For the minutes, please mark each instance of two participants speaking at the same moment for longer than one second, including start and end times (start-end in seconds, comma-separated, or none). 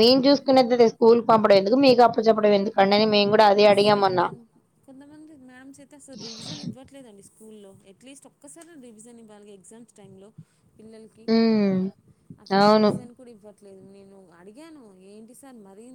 none